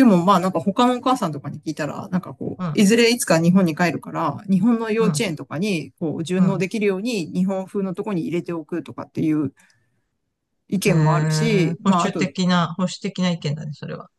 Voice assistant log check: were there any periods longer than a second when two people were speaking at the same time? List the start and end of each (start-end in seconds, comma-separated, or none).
10.8-12.3